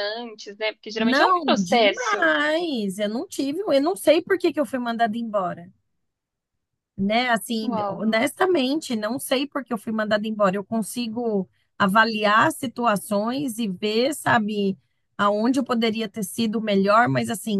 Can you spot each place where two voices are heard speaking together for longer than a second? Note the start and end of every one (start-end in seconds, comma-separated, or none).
1.0-2.3